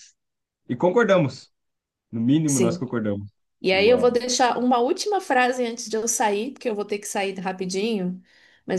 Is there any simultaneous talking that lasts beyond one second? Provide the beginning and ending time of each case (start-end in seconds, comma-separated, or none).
none